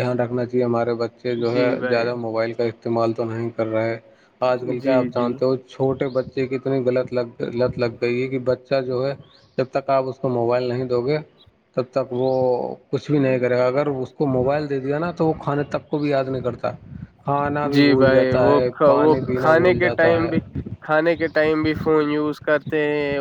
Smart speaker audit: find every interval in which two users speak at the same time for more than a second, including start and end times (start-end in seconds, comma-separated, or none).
17.7-20.3